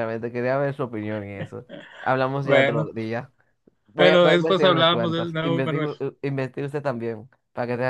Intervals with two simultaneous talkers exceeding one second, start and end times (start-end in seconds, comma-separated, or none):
4.0-5.9